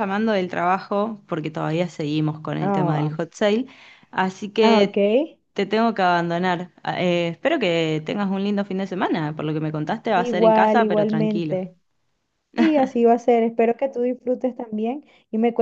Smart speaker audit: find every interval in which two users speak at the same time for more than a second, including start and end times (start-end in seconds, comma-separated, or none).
10.1-11.6